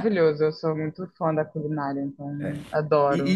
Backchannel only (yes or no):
no